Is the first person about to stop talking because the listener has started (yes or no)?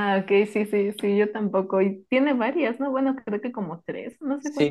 yes